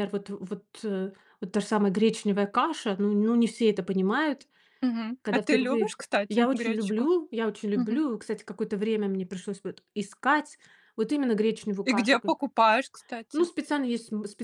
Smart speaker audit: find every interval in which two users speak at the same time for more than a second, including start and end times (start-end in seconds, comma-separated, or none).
5.2-7.1